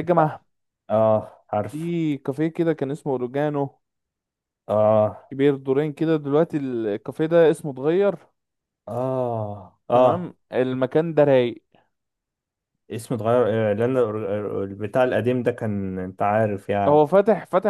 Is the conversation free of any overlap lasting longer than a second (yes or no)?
yes